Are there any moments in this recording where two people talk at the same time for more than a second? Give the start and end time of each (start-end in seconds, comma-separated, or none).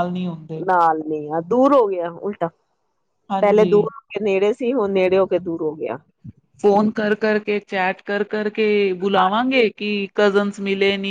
none